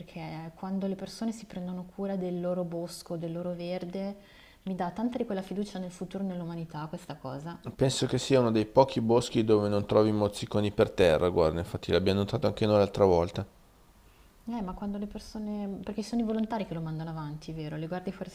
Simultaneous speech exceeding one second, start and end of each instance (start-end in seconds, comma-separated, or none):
none